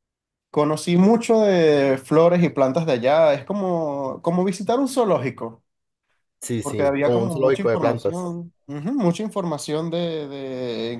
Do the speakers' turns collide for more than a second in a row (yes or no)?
yes